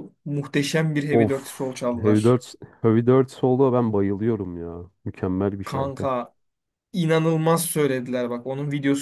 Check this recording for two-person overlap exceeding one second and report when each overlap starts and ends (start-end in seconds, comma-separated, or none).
1.1-2.4